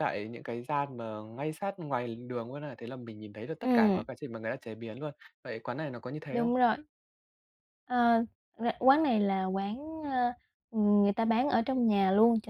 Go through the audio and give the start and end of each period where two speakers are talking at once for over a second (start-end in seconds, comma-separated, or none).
none